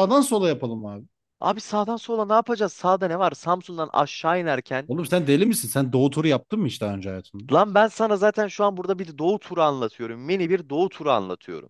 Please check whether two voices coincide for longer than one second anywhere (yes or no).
no